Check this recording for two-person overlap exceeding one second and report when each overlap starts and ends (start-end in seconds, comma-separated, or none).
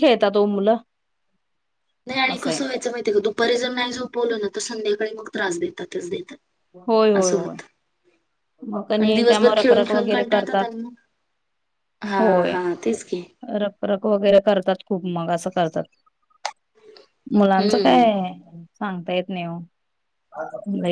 9.0-10.7